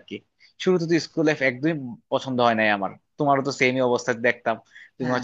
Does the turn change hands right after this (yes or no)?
no